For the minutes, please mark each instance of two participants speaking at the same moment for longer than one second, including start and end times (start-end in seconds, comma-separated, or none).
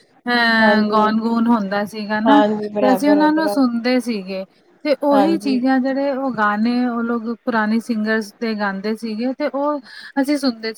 2.3-3.7